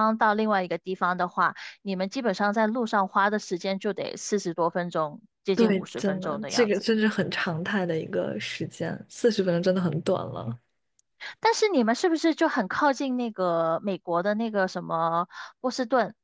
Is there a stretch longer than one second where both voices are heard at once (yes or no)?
yes